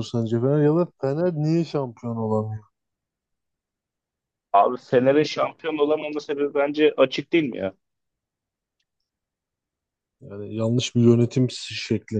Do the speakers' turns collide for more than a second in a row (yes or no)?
no